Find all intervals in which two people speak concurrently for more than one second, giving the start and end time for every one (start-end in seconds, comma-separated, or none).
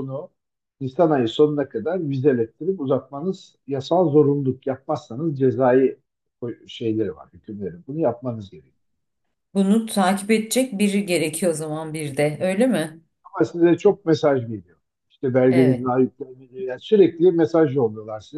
none